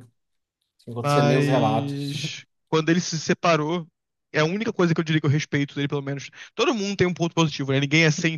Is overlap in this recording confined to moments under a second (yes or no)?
no